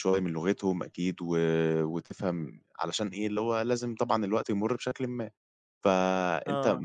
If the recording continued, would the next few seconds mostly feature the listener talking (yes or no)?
no